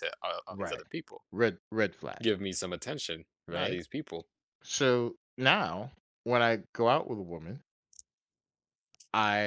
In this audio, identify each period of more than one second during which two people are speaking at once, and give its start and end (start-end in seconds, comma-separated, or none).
none